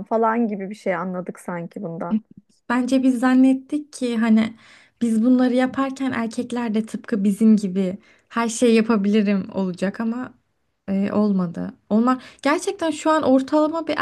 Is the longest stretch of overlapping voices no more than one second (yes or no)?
yes